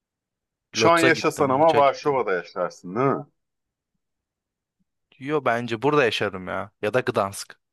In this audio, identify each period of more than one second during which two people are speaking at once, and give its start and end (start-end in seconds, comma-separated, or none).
0.8-2.2